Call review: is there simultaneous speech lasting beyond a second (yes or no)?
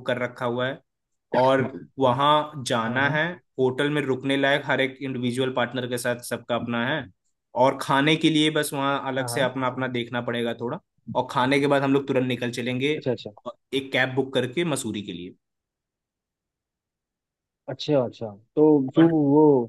no